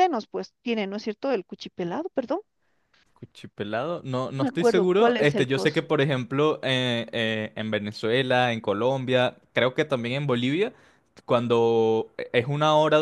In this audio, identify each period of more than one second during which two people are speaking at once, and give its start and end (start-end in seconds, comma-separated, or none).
4.3-5.9